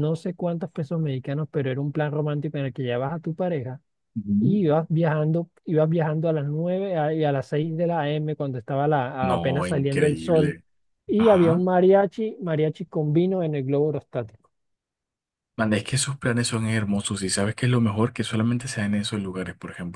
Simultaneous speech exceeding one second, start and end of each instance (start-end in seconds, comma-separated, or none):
9.2-10.6